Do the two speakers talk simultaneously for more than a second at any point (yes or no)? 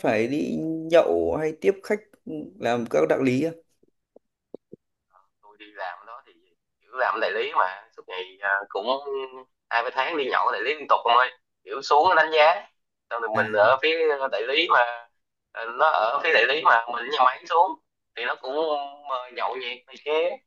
no